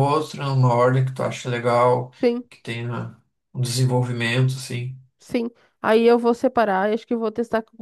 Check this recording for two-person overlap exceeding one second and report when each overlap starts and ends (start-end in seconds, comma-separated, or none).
none